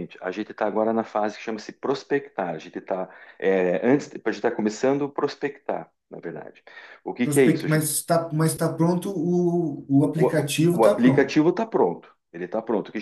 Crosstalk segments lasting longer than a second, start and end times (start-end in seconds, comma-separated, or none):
10.0-11.4